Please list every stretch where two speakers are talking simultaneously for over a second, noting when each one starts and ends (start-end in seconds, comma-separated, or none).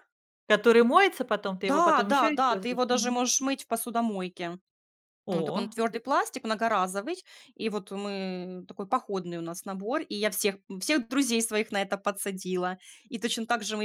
1.7-3.2